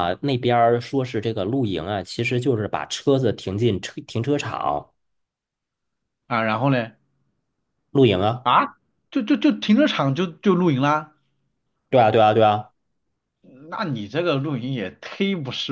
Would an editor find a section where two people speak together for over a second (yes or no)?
no